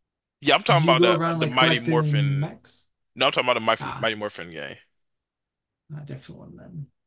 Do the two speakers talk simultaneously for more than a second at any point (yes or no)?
yes